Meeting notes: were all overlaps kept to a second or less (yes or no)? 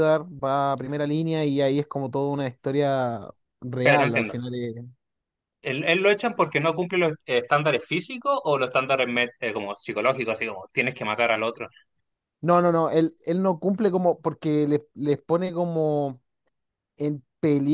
yes